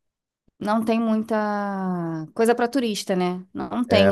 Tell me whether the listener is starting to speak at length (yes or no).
no